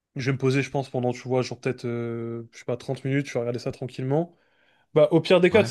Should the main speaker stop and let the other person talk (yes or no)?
no